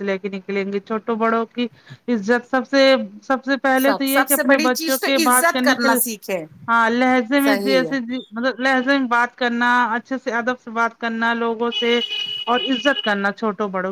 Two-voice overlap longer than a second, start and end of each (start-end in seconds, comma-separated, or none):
3.8-6.0